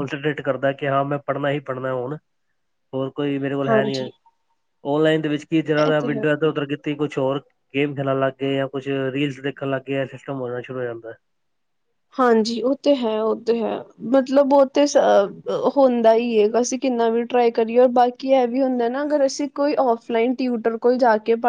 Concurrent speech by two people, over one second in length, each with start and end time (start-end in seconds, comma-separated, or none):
none